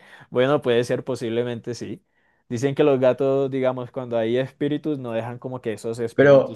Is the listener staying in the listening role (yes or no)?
no